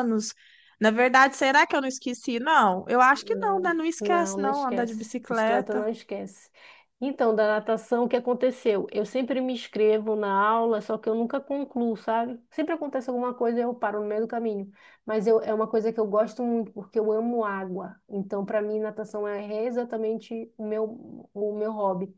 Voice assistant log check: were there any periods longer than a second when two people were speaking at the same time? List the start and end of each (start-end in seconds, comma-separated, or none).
3.1-5.9